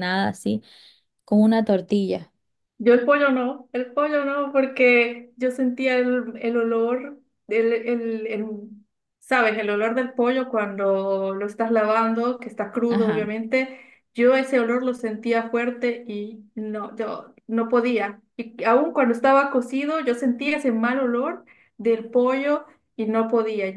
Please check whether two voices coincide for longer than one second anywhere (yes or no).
no